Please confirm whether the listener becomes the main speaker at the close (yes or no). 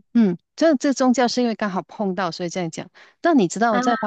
no